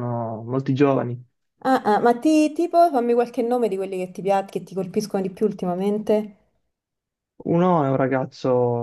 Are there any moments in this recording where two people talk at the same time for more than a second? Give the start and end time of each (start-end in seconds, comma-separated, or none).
none